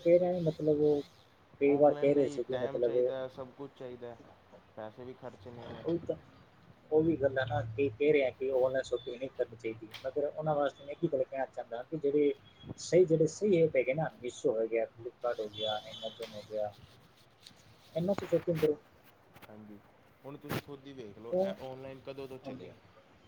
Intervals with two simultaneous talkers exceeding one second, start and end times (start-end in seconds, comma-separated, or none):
1.8-3.2